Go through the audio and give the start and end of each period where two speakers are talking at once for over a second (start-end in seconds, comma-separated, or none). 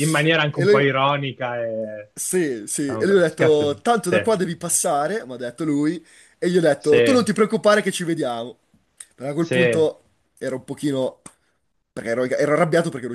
2.8-4.2